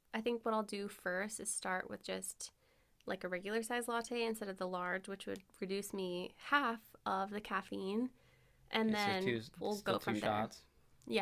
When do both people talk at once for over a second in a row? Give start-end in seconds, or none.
8.8-10.5